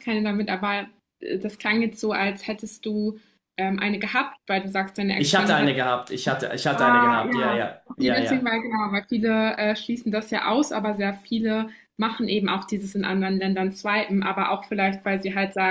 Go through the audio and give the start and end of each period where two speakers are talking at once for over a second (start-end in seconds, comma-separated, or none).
6.7-8.5